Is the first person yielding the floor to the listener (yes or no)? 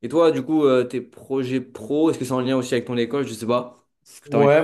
yes